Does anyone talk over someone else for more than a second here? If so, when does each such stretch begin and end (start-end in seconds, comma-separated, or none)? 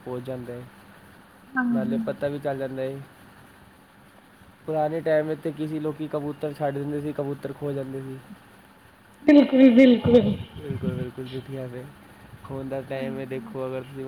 none